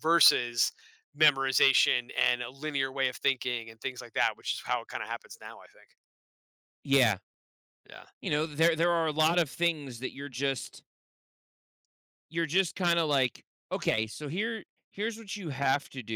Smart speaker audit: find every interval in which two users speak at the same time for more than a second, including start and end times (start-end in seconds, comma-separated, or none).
none